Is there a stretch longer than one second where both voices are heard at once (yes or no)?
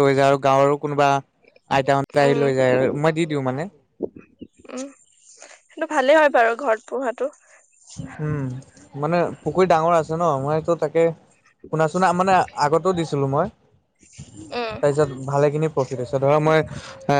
no